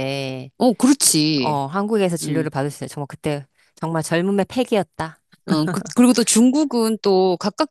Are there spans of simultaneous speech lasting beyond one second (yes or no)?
no